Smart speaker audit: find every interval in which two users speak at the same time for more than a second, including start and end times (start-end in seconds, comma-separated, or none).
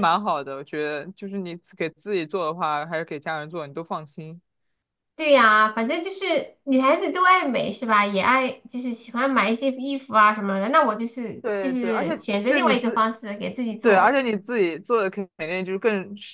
11.4-13.1